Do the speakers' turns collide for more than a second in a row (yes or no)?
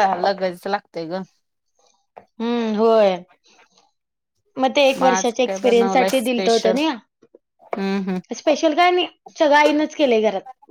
yes